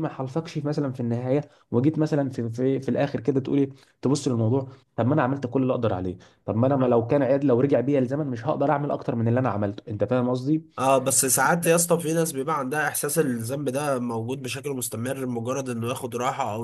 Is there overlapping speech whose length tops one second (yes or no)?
no